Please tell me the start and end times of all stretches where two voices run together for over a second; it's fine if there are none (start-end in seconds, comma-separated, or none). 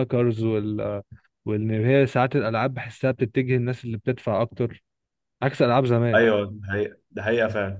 none